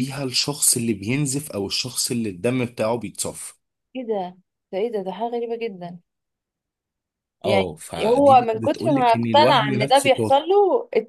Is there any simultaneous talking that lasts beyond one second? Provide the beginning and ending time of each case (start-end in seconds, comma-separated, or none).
7.5-10.4